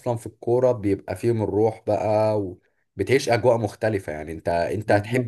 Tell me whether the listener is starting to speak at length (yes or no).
no